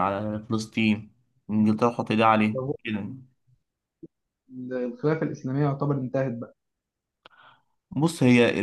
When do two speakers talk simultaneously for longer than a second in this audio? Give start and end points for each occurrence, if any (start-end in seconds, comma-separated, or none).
none